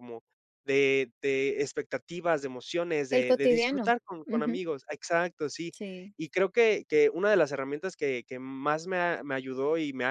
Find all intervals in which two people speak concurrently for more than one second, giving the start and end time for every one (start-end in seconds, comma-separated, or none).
3.1-4.6